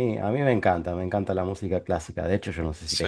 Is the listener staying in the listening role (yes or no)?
yes